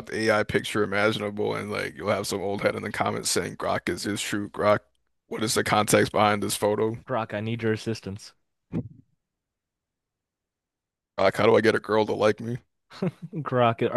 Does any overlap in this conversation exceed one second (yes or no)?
no